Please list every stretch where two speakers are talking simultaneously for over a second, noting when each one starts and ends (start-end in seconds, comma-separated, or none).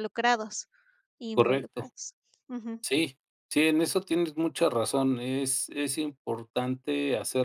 none